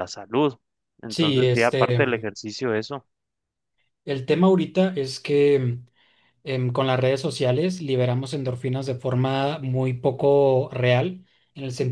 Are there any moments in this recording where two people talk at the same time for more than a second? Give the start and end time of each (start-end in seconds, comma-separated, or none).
1.1-2.3